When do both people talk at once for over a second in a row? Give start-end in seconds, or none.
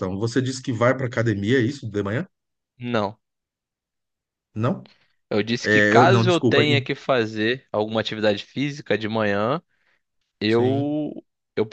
5.6-6.8